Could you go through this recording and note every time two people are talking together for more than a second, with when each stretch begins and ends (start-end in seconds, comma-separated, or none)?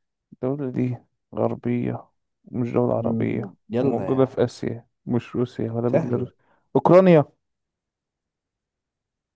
2.9-4.3